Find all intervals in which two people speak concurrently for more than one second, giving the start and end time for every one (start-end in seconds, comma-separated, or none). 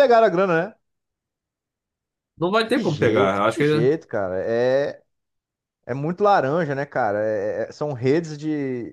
2.7-3.9